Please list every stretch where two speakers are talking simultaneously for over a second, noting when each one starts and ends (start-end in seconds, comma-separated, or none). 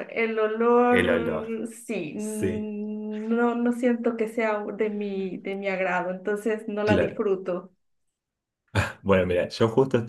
none